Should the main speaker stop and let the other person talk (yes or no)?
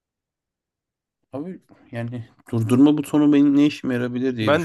yes